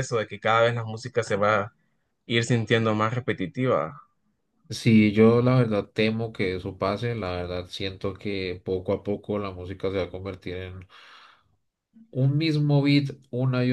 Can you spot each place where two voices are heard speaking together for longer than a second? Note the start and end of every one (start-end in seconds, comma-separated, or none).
none